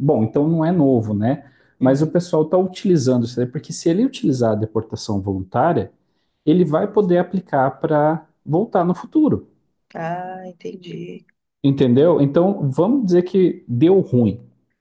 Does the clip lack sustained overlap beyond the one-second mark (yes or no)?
yes